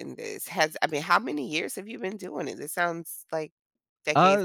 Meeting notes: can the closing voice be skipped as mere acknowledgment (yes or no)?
no